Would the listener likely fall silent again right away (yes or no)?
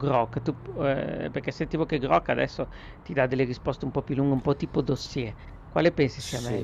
no